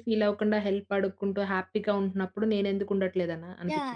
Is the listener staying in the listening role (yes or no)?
no